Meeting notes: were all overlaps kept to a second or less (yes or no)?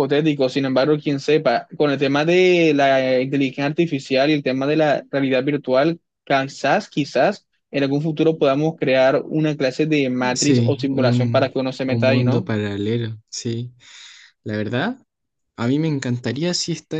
no